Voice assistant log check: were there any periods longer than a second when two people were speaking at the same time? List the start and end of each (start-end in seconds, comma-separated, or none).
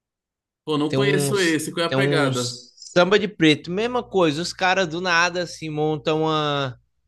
0.9-2.6